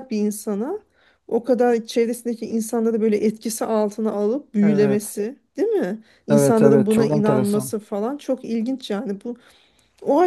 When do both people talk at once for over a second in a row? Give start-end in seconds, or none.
6.3-7.7